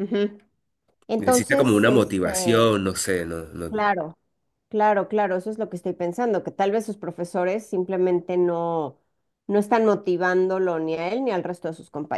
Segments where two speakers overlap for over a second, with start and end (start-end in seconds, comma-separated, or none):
1.2-2.8